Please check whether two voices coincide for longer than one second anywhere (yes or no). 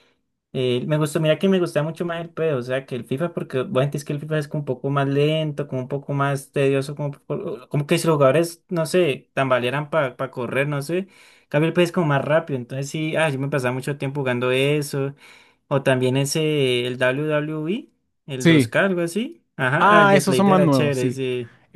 yes